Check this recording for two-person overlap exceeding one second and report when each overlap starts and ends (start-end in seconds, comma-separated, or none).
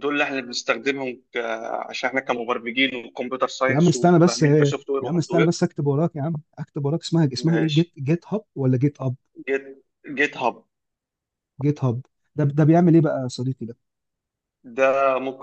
3.7-5.5